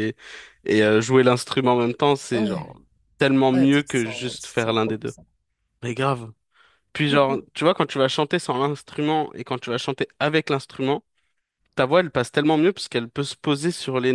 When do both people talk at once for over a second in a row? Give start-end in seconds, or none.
3.5-5.1